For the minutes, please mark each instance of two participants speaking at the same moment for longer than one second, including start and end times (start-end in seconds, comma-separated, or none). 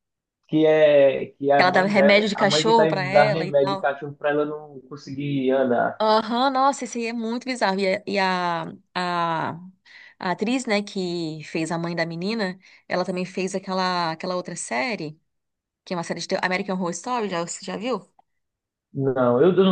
1.6-3.9